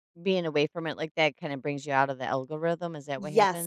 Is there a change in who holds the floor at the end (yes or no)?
yes